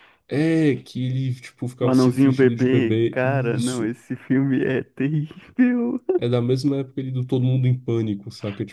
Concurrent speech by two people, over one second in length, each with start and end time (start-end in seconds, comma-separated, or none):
1.8-3.9